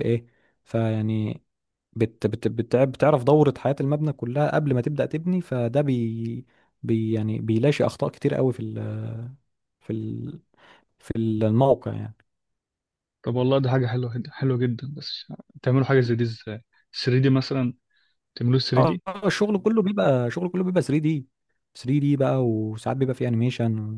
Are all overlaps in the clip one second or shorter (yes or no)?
yes